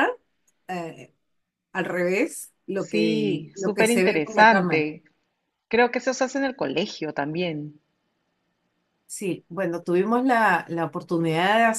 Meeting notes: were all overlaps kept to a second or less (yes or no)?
no